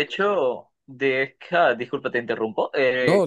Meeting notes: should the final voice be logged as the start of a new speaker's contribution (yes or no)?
no